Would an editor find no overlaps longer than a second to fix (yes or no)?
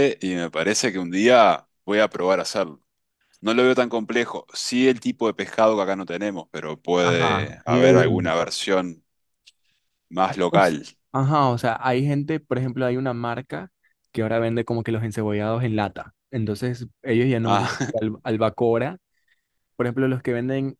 no